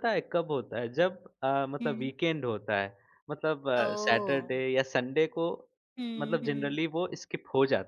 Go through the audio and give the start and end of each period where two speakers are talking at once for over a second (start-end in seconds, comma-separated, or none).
none